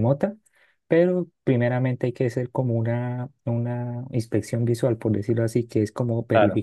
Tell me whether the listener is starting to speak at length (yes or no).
no